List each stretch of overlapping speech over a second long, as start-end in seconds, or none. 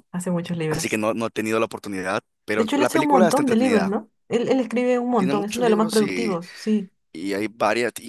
2.5-4.0, 5.2-6.4